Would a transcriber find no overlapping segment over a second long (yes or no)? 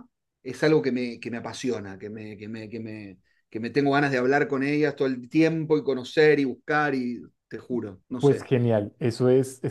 yes